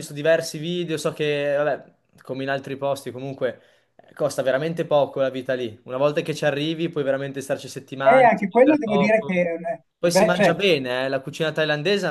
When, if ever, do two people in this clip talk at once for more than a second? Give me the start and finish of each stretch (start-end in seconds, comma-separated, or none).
8.0-9.3